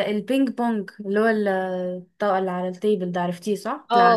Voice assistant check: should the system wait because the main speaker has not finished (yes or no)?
no